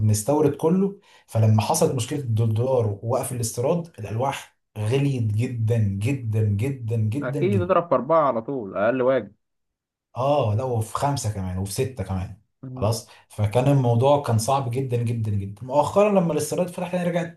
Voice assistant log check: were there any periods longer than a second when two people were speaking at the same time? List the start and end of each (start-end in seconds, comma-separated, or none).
none